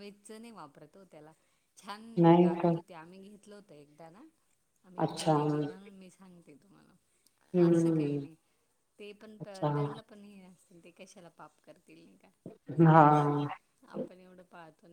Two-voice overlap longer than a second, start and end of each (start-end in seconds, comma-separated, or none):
none